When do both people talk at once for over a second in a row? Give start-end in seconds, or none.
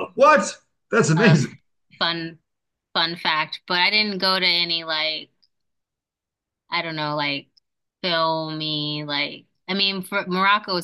none